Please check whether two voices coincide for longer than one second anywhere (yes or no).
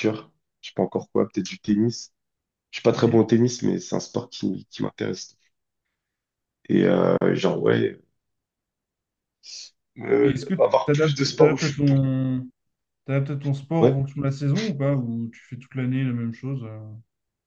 yes